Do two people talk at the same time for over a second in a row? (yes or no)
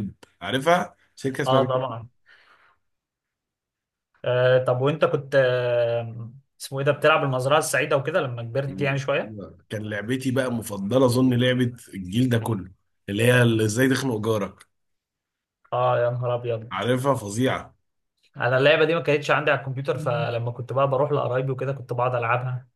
no